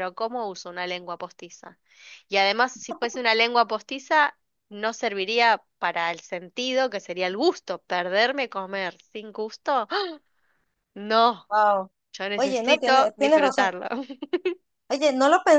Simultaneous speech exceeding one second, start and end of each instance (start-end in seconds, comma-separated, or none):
12.3-13.7